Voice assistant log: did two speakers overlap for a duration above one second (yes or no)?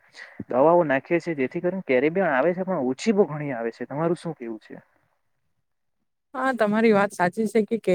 no